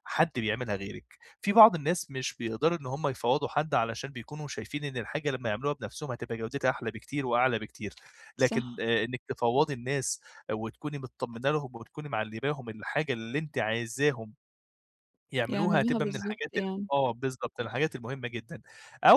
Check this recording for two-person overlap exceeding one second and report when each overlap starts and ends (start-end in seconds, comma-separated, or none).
15.5-16.9